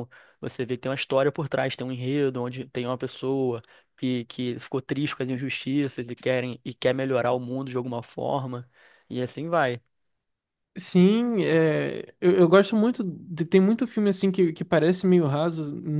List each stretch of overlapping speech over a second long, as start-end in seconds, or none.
none